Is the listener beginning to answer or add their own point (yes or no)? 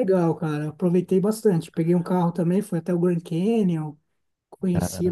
no